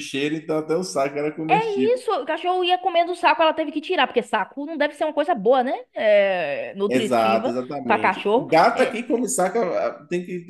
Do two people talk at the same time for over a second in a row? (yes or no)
yes